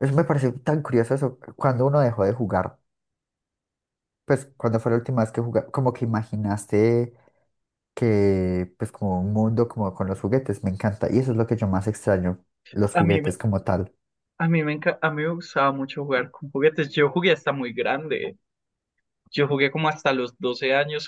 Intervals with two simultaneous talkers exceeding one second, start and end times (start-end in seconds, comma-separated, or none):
none